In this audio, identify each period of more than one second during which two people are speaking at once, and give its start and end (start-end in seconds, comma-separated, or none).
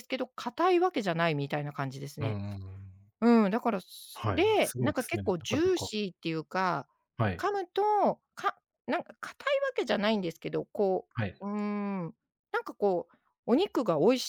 4.1-5.9